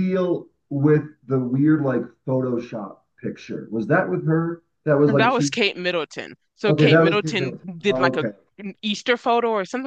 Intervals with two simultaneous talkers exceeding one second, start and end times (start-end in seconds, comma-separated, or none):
6.7-8.3